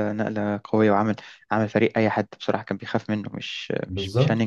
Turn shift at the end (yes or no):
yes